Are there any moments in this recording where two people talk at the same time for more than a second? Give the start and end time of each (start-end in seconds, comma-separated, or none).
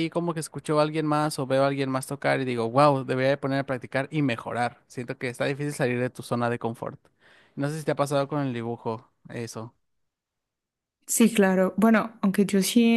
none